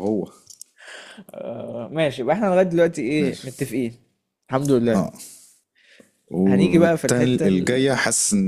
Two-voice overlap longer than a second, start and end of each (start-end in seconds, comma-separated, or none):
6.5-7.9